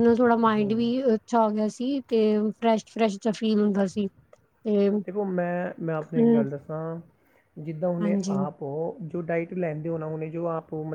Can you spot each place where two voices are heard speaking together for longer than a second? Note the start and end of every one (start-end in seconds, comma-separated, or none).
none